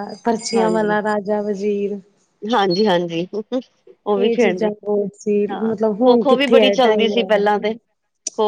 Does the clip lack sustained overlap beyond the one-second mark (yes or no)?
no